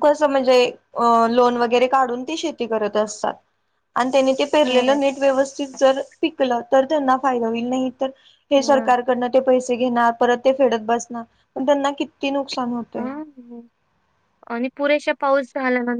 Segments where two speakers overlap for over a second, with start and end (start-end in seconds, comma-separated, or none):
none